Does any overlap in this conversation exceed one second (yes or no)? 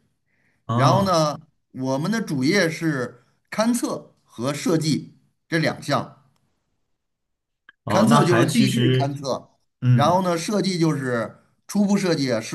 yes